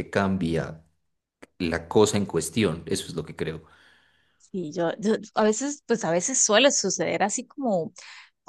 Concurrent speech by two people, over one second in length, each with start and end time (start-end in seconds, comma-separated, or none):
none